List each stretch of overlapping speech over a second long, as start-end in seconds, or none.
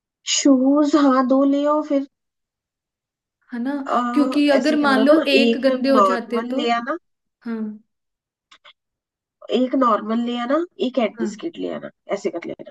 4.1-6.6